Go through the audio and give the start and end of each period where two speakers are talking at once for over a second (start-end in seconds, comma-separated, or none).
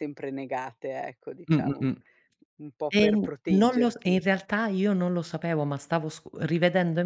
2.9-4.3